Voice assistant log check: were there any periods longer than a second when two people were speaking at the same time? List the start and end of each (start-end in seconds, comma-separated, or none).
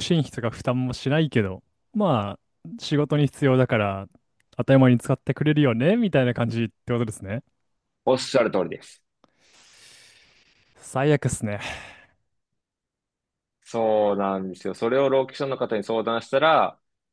none